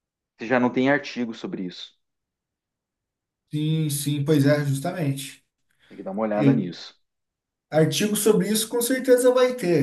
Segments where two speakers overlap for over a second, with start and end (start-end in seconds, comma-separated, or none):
none